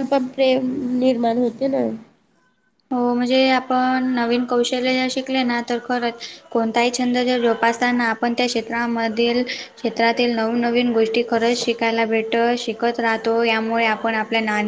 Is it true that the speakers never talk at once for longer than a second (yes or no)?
yes